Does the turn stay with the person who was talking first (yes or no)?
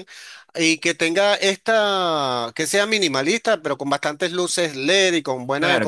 no